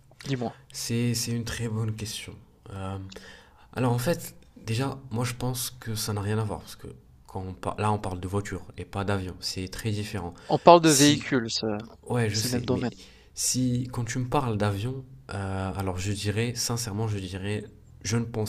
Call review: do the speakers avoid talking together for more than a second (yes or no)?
yes